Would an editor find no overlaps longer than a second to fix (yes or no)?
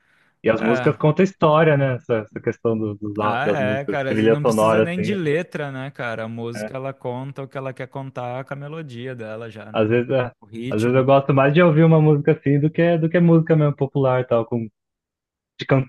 no